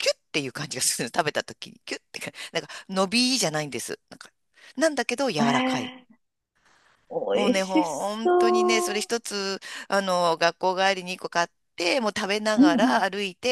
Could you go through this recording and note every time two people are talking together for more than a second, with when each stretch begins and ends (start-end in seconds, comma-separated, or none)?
7.3-9.1